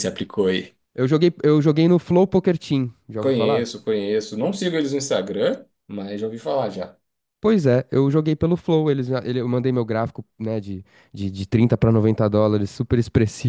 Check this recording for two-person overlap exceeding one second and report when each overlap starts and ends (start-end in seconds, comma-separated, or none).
none